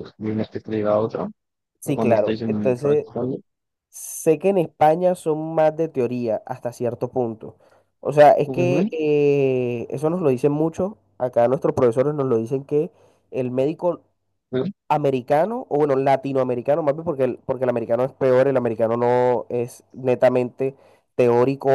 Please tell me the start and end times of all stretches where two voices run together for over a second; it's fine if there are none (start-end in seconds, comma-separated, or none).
1.8-3.1